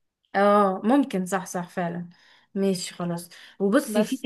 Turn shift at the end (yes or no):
no